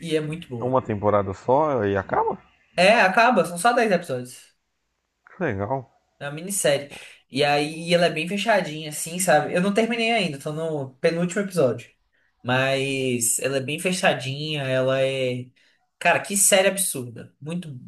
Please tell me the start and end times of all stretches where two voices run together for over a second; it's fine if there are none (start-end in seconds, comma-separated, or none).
none